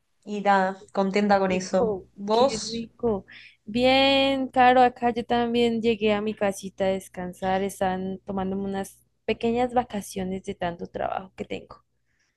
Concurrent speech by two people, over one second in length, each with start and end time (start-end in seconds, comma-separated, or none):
1.2-2.9